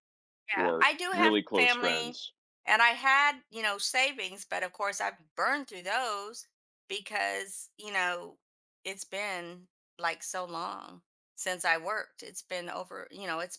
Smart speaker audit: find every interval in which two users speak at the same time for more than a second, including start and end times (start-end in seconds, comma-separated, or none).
0.5-2.2